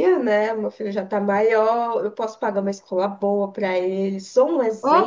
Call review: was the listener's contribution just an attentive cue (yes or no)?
yes